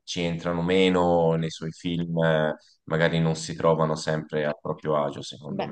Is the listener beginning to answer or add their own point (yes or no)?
yes